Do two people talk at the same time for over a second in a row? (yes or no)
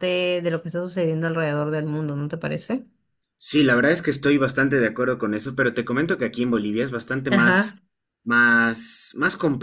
no